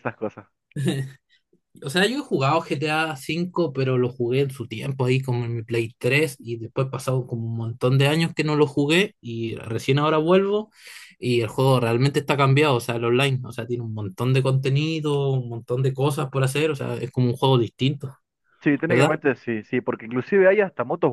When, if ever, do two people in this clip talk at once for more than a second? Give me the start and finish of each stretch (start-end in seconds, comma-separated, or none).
none